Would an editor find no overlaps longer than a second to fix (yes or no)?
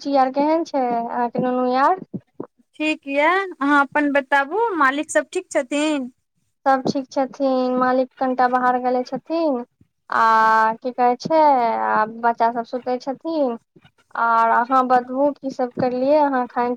yes